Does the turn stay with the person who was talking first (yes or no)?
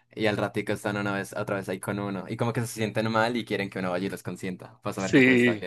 no